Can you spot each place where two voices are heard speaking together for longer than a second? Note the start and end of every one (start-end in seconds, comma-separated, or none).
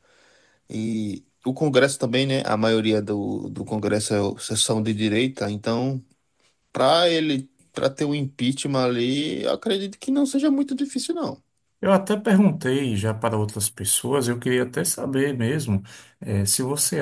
none